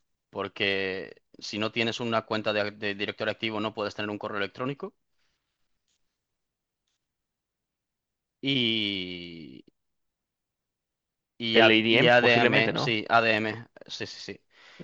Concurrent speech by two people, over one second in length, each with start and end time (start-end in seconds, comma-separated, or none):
11.5-13.0